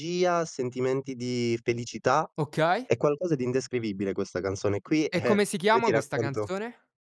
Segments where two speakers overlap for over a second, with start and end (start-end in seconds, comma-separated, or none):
5.1-6.5